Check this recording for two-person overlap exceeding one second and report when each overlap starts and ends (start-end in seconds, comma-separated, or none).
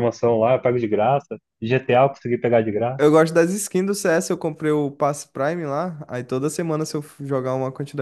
none